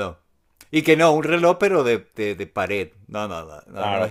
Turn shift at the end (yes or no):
no